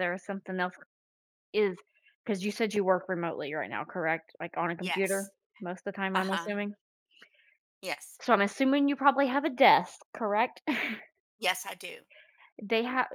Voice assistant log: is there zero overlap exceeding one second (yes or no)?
yes